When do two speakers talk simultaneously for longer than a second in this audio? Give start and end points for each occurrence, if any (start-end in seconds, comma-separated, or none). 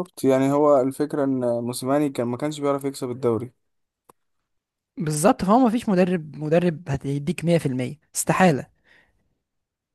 none